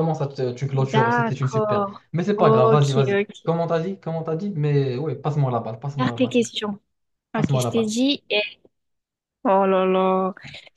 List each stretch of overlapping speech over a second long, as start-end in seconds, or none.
0.7-3.5